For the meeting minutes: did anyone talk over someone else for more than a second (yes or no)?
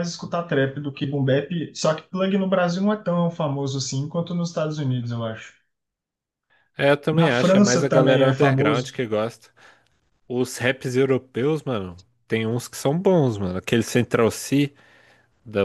yes